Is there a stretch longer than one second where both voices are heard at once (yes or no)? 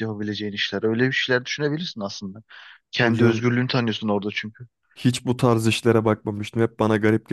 no